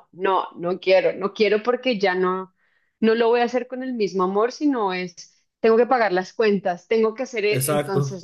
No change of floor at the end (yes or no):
yes